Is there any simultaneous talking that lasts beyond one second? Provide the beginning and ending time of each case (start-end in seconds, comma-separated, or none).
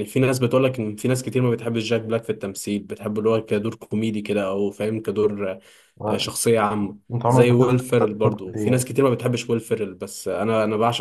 7.1-8.8